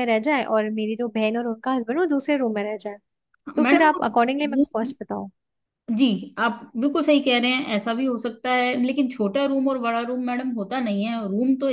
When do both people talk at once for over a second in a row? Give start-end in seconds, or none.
3.6-5.0